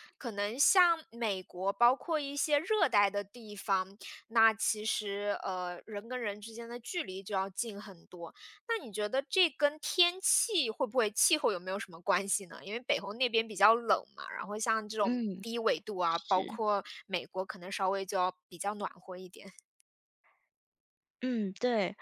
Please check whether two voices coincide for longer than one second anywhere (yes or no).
no